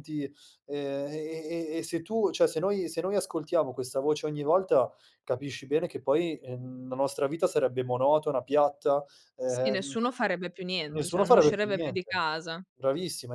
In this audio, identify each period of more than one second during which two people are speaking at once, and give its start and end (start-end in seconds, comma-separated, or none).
10.9-12.1